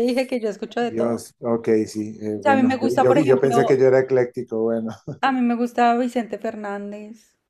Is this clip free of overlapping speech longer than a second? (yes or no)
no